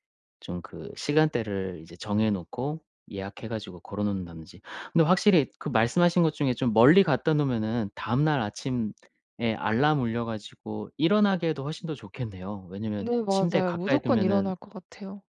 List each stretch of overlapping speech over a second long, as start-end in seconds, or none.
13.0-14.5